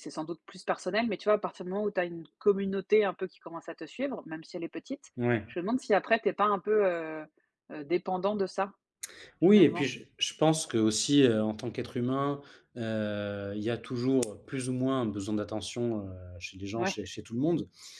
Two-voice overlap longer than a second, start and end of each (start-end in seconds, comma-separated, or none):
none